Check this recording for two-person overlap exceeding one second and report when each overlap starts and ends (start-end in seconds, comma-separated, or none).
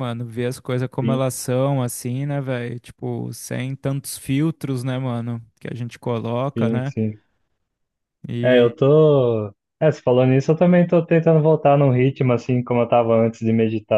none